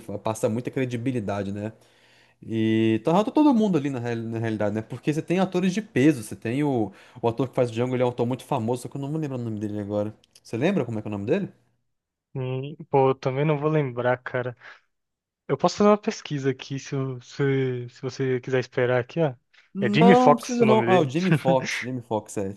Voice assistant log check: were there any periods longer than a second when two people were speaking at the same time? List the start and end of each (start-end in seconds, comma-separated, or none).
19.8-21.1